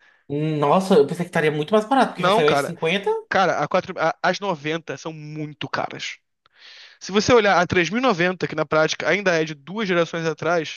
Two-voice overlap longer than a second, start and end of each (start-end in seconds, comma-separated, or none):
none